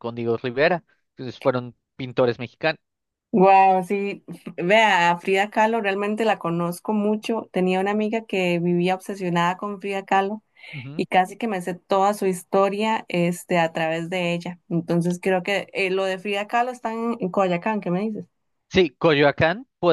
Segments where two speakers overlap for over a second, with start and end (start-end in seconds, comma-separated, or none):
none